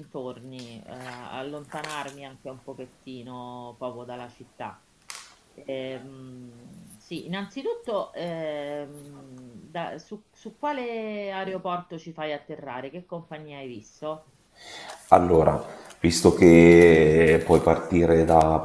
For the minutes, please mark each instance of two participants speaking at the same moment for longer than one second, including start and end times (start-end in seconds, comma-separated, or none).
none